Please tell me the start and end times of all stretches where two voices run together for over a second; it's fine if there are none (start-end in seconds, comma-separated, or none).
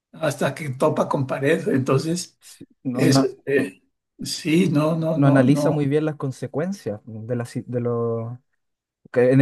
none